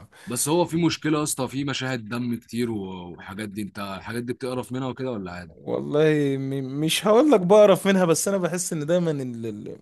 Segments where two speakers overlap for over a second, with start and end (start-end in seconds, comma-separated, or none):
none